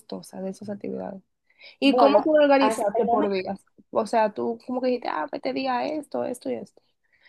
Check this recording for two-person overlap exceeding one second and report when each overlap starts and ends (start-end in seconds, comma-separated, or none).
1.8-3.3